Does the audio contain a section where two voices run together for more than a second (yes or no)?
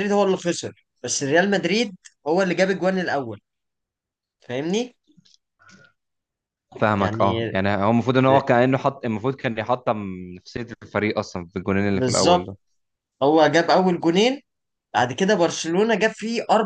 no